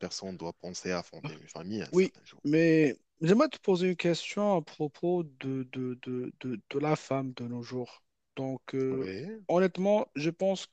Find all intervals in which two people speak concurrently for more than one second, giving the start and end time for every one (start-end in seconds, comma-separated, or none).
none